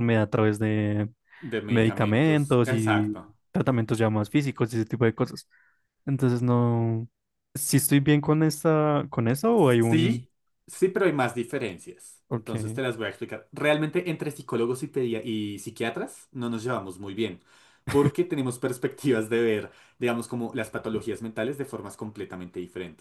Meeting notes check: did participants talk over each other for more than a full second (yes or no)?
yes